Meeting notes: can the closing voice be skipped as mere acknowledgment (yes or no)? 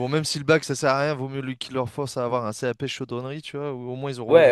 no